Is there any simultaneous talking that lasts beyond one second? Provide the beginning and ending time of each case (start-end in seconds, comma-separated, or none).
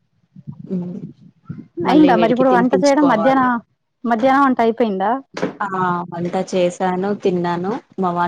1.9-3.5